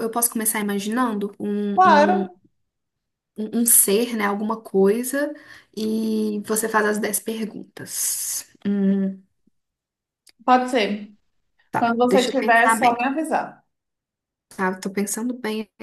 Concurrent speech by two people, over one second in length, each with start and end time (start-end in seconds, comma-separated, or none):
11.7-13.0